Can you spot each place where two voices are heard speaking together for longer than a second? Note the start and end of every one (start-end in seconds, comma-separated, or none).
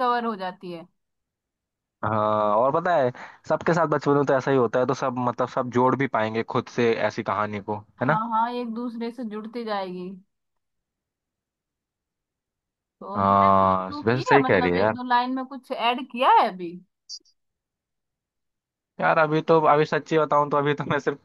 13.2-14.9